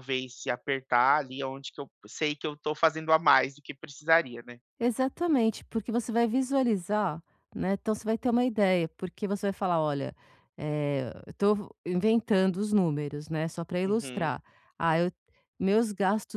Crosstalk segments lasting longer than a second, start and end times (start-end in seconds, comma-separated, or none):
none